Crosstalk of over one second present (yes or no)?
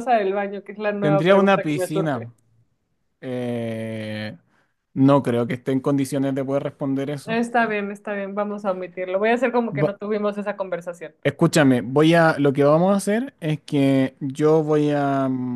yes